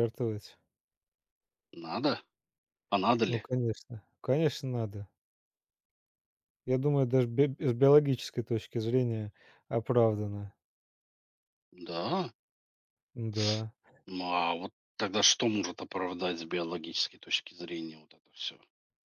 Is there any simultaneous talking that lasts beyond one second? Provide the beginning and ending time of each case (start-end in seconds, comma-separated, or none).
none